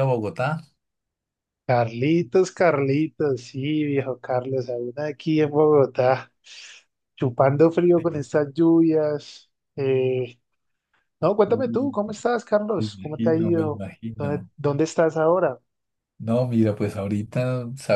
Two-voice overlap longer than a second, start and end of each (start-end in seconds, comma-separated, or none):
12.8-14.5